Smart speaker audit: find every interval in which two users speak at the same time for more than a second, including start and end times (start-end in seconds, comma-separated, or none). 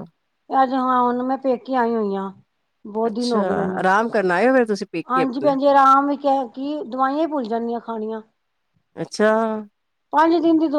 none